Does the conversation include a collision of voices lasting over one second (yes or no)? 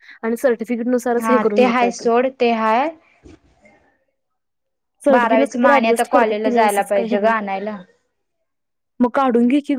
yes